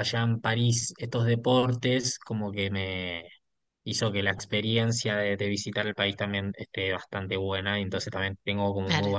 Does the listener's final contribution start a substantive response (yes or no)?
no